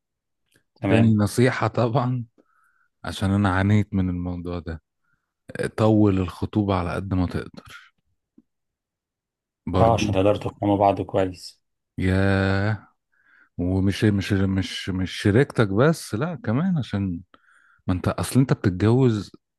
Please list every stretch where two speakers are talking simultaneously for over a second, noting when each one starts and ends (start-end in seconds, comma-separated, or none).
none